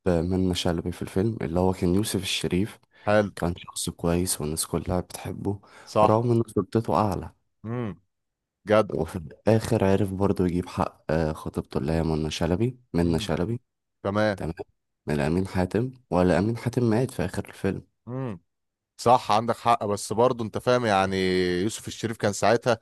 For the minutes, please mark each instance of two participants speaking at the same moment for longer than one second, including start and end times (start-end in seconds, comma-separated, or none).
none